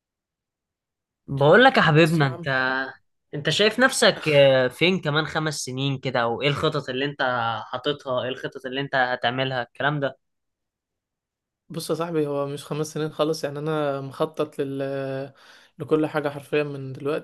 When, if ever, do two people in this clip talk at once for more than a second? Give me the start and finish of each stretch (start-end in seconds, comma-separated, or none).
none